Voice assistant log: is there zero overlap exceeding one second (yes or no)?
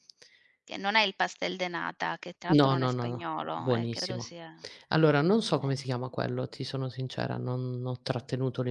no